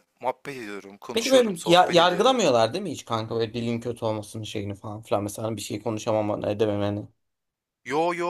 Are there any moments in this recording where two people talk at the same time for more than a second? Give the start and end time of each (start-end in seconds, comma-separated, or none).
1.1-2.4